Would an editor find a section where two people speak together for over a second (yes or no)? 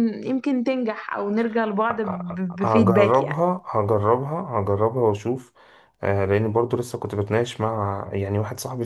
yes